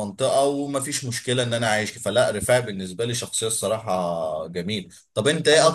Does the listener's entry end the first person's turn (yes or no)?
no